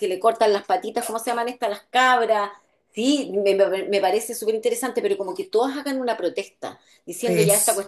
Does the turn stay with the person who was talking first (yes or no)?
yes